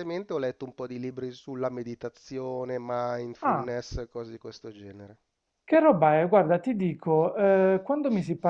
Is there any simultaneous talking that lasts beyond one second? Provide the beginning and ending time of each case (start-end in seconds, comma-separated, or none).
none